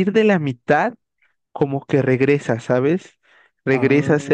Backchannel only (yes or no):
yes